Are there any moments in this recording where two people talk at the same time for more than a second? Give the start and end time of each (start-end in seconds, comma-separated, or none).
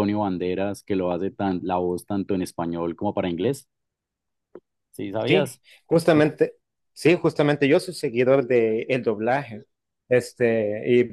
none